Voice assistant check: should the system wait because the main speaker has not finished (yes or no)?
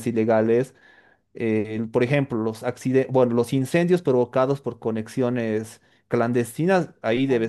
yes